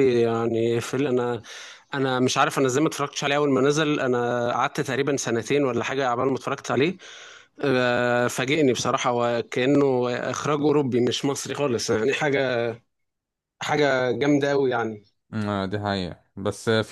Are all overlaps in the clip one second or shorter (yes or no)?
yes